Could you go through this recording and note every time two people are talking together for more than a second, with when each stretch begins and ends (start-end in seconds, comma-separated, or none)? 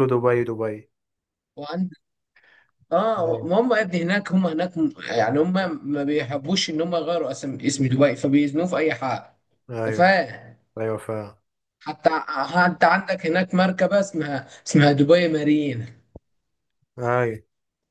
none